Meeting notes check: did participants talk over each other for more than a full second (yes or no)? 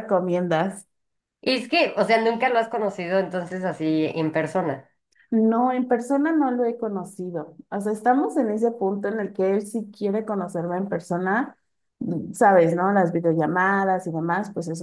no